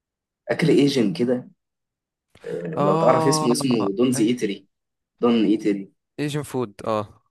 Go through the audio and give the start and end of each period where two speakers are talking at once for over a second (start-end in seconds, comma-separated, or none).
2.8-4.4